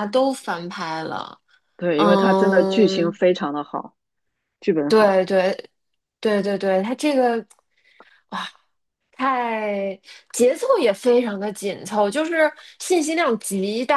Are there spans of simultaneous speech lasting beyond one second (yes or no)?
yes